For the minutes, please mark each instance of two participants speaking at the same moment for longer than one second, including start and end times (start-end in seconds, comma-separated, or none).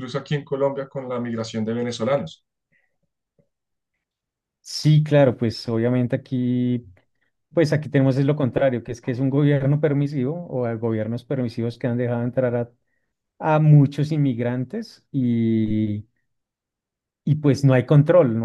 none